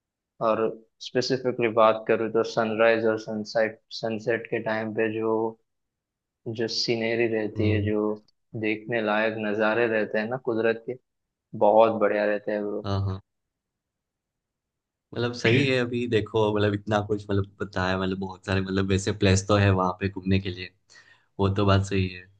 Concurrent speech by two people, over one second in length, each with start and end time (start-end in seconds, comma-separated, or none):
none